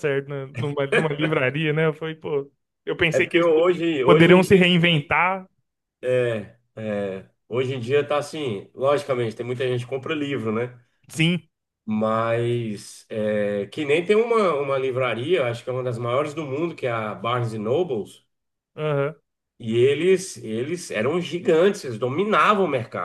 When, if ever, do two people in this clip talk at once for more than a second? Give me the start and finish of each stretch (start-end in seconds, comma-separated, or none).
3.1-5.1